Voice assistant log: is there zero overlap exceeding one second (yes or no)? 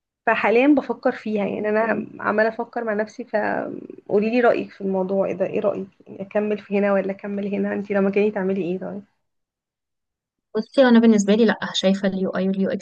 yes